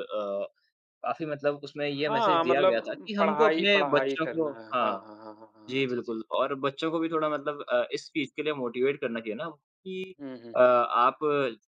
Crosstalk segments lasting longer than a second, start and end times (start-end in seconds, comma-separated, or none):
2.1-5.1